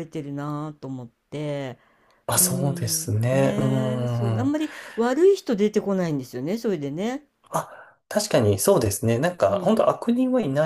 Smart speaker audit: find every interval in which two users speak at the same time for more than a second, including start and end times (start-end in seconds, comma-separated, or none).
2.4-4.5